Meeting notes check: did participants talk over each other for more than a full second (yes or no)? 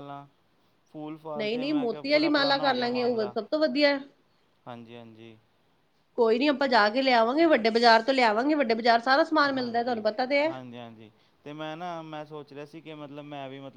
yes